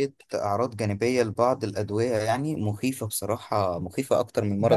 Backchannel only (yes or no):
no